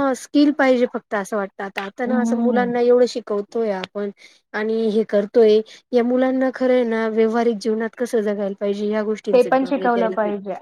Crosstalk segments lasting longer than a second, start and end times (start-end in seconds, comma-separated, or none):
none